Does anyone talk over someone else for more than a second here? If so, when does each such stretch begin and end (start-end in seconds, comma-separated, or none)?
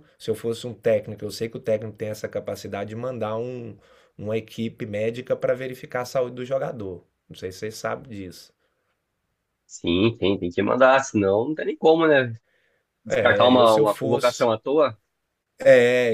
13.1-14.5